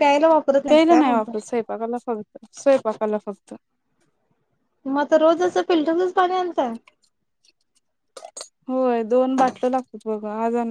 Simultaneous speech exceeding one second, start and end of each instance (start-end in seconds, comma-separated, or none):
none